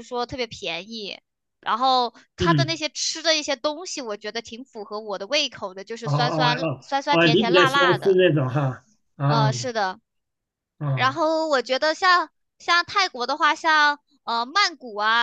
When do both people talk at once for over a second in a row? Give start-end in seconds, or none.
6.0-8.2